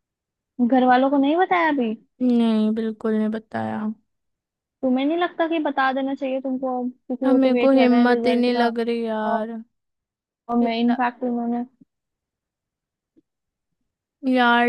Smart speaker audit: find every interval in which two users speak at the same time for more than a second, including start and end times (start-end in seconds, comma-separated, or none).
7.2-8.7